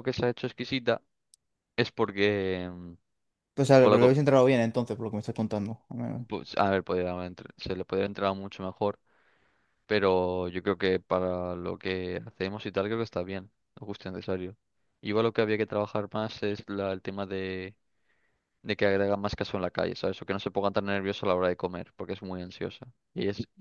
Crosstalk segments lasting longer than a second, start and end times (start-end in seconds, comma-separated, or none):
none